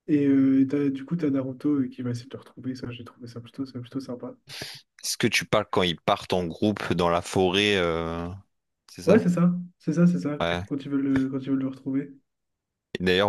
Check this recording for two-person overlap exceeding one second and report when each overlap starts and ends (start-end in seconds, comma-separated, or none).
none